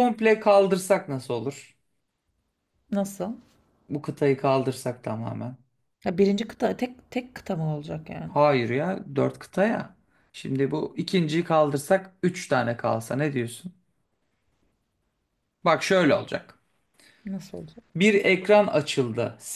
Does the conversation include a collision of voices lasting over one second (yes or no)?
no